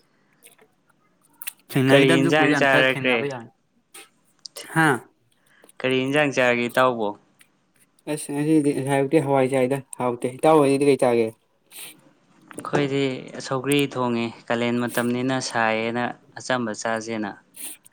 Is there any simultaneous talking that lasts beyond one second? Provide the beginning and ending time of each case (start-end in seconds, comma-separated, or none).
1.9-3.3